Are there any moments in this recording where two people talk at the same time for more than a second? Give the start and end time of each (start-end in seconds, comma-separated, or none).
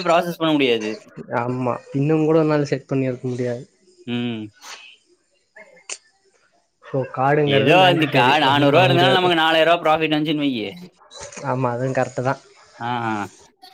7.6-9.3